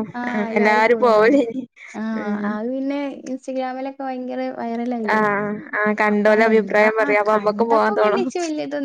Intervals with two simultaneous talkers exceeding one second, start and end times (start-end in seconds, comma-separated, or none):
6.1-8.2